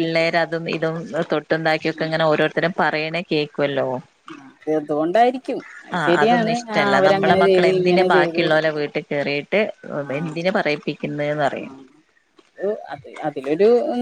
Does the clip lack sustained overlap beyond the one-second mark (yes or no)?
no